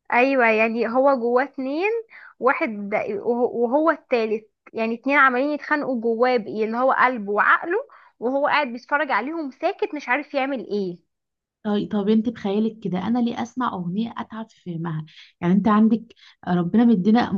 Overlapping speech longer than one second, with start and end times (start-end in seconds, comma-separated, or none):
none